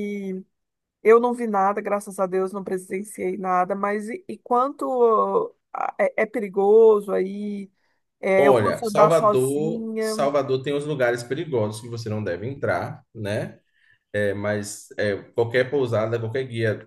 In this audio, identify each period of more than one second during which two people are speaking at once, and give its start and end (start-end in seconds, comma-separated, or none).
8.3-10.2